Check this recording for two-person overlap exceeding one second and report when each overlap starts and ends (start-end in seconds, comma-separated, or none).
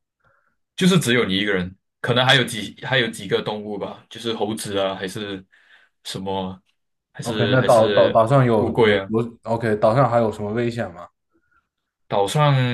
7.2-9.1